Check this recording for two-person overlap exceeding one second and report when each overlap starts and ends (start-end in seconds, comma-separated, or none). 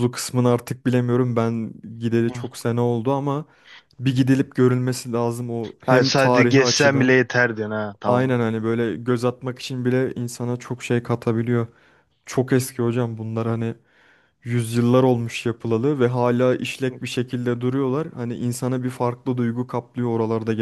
5.9-7.2